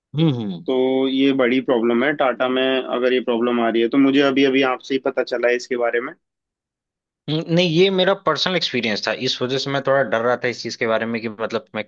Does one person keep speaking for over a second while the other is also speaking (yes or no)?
no